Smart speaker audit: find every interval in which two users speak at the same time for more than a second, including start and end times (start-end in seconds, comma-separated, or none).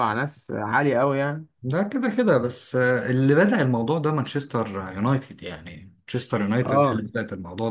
none